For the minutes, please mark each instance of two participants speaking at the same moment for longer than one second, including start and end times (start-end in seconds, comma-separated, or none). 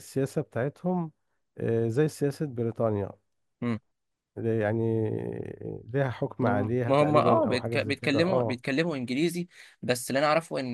6.8-8.6